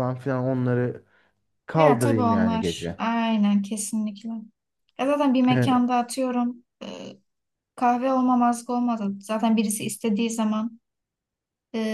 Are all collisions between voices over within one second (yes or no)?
no